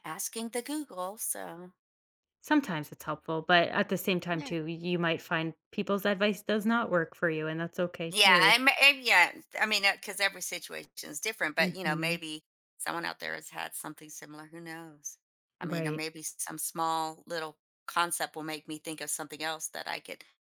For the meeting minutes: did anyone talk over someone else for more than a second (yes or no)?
no